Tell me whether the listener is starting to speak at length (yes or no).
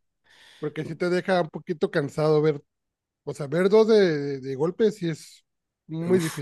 yes